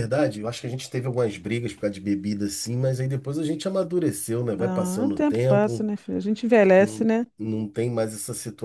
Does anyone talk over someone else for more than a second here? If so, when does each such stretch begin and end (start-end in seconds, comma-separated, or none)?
4.6-5.9